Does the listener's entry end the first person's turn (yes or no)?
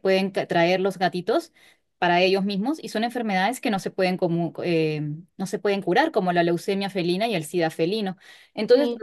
no